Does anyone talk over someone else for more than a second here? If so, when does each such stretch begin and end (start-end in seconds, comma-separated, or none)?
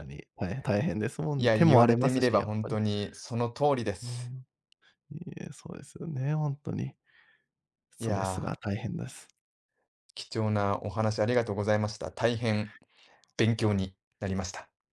1.4-2.8